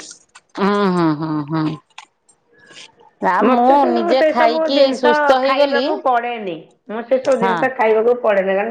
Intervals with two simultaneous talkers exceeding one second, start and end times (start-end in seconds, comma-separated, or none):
3.5-5.8